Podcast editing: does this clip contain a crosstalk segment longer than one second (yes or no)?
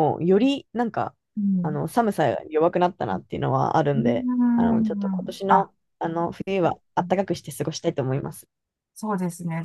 yes